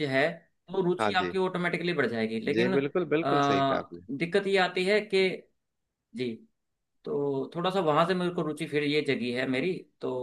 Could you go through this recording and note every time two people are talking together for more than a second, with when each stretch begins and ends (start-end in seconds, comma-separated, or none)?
2.5-4.0